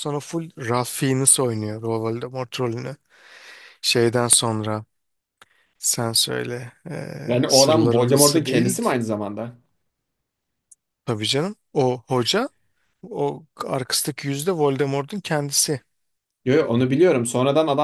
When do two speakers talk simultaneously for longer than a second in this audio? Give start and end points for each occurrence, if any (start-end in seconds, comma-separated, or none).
7.3-8.8